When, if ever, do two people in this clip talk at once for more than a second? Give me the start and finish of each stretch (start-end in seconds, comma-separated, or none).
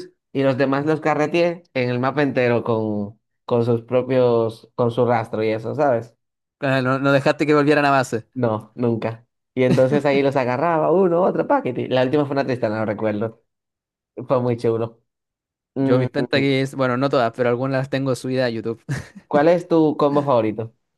none